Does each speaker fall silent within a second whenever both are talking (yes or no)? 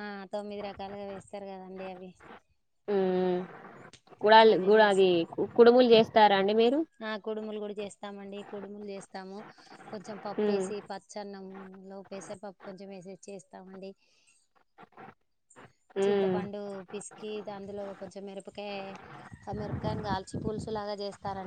yes